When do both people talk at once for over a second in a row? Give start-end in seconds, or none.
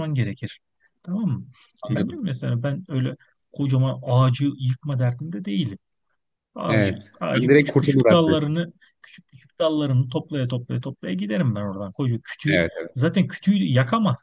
6.7-8.4